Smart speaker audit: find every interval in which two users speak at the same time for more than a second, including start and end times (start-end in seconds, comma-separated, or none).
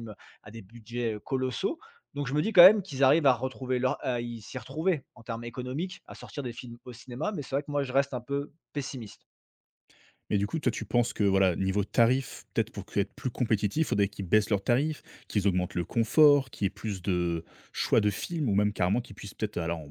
none